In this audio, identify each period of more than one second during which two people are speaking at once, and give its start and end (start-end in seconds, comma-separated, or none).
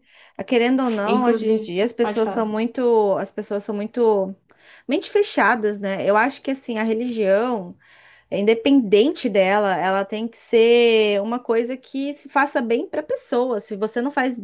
1.1-2.6